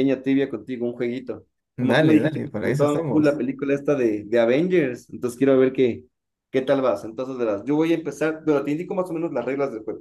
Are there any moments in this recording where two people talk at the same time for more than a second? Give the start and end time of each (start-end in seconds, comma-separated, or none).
1.8-3.4